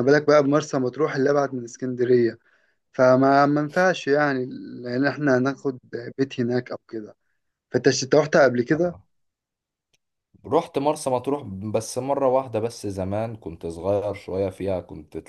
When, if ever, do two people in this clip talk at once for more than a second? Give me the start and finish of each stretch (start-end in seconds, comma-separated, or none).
none